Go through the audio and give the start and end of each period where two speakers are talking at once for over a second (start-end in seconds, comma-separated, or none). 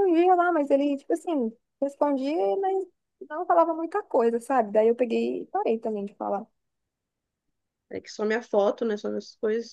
none